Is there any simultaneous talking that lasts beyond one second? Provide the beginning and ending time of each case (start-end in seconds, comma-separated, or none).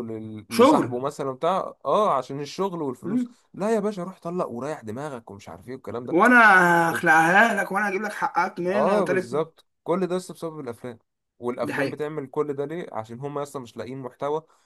none